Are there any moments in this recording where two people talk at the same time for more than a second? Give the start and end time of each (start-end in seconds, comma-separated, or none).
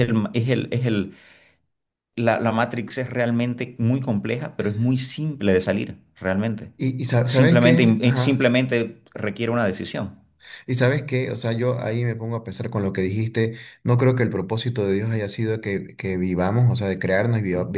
7.2-8.5